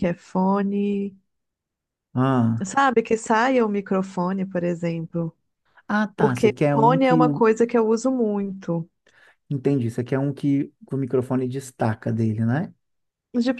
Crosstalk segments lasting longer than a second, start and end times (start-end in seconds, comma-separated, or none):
6.2-7.4